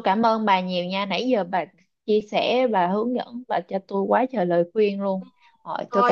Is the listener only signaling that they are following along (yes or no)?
no